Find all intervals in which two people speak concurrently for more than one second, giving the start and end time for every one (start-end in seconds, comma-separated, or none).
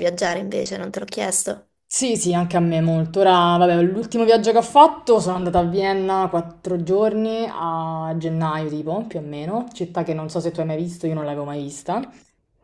none